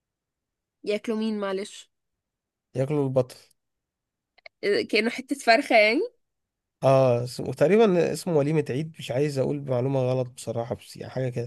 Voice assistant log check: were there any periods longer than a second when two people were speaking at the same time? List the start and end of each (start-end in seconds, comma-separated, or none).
none